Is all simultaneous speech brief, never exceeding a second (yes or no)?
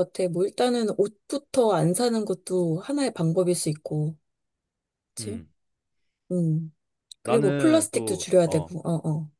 no